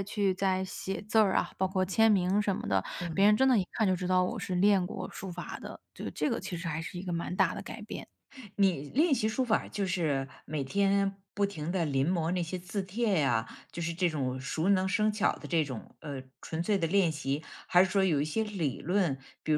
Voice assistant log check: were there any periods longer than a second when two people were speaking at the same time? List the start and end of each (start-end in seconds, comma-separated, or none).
none